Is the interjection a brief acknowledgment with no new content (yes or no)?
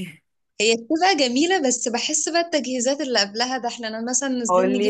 no